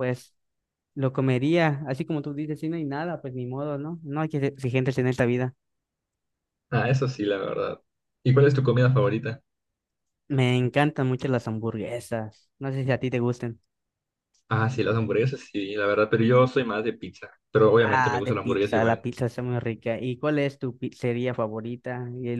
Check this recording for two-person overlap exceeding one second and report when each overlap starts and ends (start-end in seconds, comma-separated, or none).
17.8-19.1